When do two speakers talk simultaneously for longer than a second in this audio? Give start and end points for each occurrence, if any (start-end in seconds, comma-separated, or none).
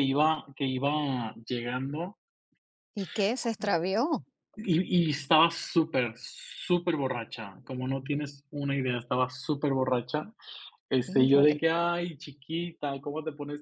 none